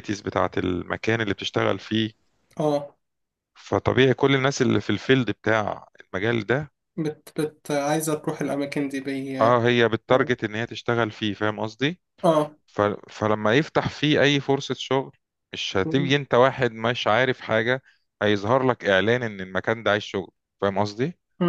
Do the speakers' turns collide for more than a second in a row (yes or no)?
no